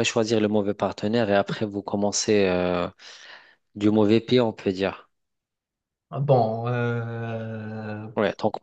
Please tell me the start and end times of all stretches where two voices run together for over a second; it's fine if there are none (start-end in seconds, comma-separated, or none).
none